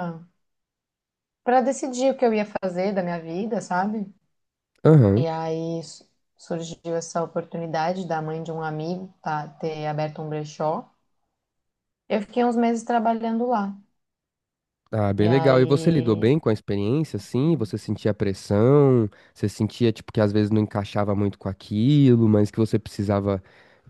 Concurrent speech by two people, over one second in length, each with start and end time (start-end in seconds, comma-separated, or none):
15.2-16.4